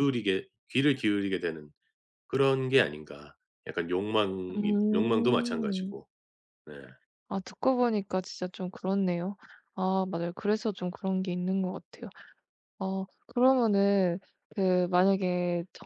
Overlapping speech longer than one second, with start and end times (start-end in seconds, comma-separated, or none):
4.5-6.0